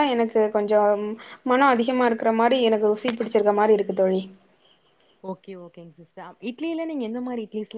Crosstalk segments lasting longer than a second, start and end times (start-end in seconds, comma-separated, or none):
none